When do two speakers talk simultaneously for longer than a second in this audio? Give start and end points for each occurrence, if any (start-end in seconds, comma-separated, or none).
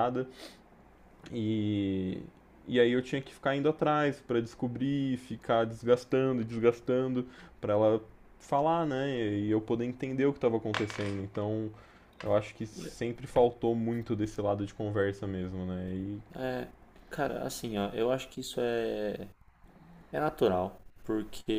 none